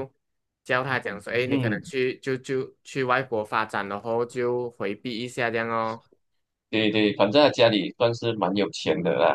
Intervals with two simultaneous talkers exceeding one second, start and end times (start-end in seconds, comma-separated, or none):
none